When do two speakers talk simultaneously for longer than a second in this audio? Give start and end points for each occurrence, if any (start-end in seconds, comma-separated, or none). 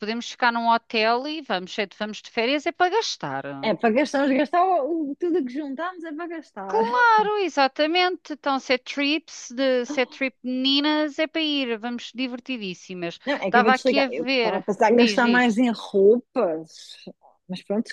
13.2-15.6